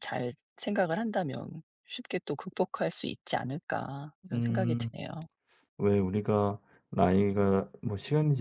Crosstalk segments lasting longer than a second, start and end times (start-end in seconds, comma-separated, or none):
none